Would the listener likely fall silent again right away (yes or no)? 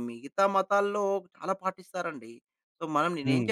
yes